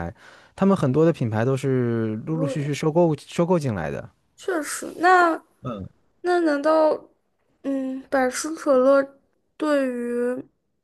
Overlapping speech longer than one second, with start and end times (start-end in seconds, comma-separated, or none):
none